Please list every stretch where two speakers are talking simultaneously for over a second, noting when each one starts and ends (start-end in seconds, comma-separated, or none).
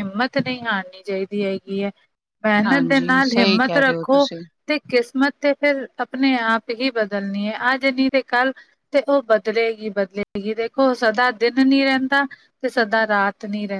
2.6-4.3